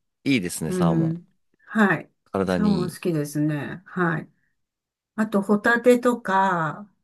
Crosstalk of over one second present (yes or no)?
no